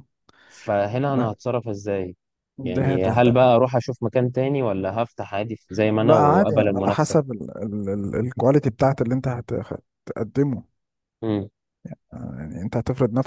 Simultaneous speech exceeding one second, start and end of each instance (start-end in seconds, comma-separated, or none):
6.0-7.2